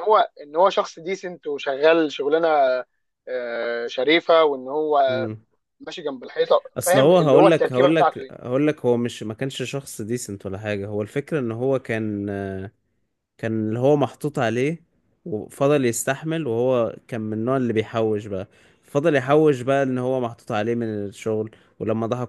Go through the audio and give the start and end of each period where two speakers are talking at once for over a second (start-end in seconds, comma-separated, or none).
6.8-8.3